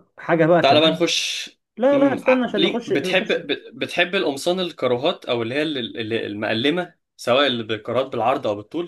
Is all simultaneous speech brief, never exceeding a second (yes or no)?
no